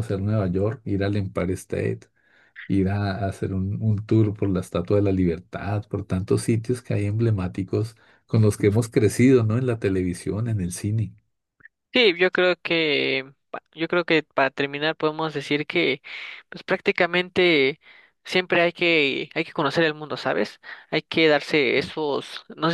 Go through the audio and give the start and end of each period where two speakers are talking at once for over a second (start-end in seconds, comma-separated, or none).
none